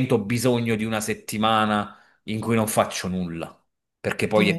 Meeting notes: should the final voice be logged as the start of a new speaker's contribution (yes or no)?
yes